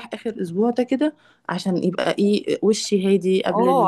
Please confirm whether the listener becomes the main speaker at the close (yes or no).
yes